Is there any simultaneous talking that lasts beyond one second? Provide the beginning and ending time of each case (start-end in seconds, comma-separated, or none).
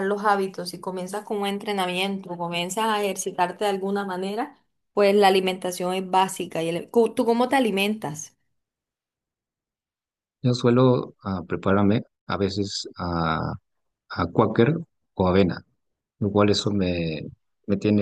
none